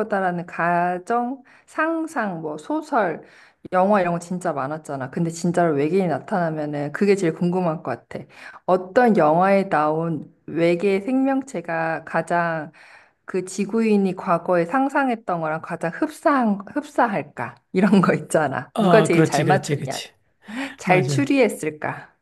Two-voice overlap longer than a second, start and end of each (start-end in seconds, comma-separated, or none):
18.7-20.0